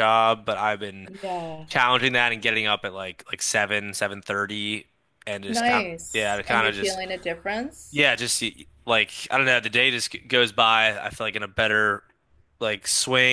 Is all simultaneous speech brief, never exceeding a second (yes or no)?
no